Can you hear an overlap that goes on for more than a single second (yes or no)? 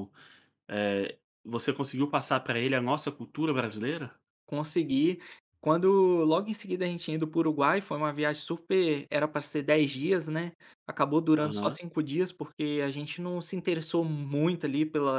no